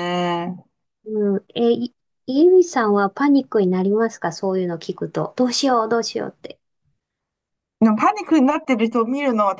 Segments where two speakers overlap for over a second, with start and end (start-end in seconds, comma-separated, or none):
none